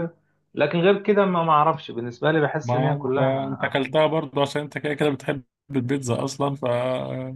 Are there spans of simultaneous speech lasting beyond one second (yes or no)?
yes